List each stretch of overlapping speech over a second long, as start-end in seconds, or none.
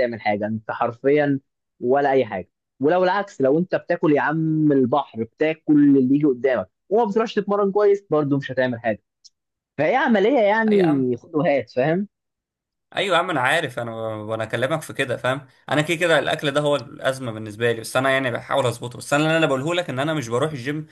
none